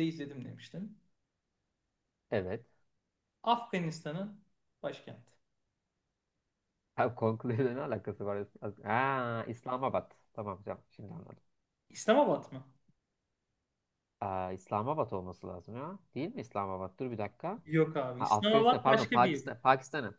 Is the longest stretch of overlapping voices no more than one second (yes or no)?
no